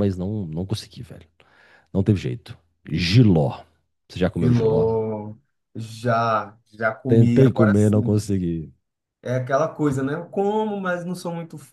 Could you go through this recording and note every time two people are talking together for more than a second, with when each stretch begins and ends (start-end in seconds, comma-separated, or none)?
7.1-8.3